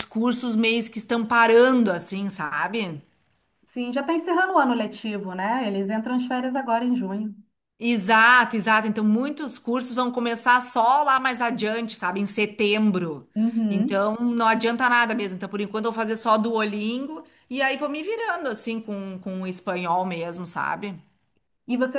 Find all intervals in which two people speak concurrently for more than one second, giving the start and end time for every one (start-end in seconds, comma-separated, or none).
none